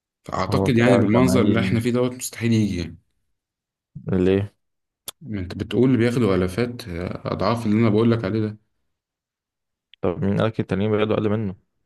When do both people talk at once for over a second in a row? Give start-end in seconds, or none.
0.5-1.8